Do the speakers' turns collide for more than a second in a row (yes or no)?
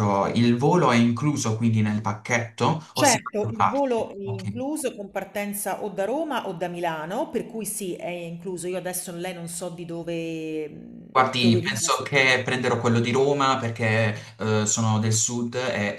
yes